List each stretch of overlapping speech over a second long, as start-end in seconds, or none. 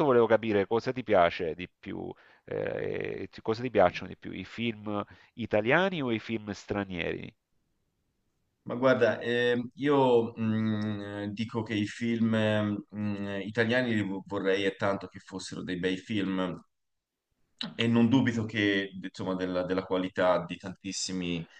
none